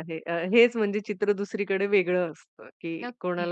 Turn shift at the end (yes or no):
no